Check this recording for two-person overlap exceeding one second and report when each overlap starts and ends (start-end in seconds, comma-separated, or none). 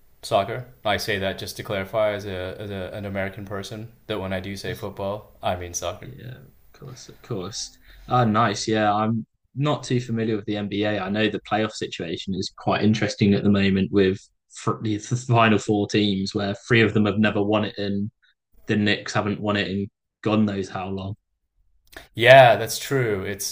none